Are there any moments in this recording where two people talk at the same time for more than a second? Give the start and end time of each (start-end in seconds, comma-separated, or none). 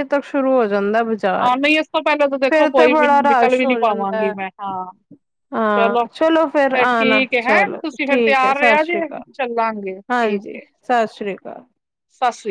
2.5-4.3, 6.7-9.3